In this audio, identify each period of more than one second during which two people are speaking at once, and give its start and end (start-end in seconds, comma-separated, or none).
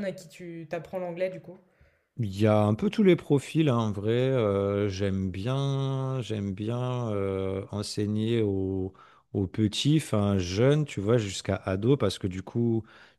none